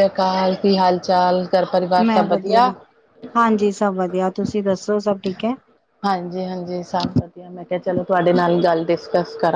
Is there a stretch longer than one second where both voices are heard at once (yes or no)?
no